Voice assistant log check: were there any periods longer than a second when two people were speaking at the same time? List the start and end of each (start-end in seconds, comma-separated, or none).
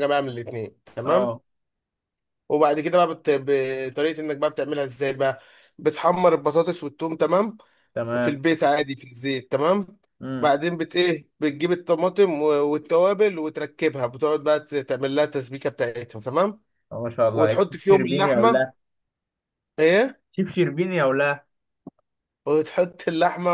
17.3-18.7